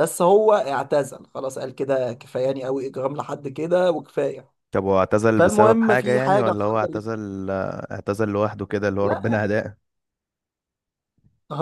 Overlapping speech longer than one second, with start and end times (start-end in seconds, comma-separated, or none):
5.4-7.0